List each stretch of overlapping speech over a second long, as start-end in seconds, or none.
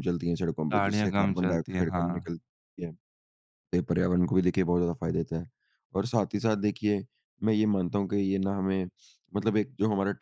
0.7-2.3